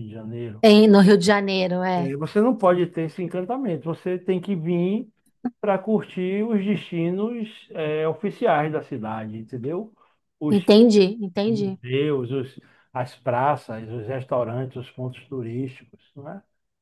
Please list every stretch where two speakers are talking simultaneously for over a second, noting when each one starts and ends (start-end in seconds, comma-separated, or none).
none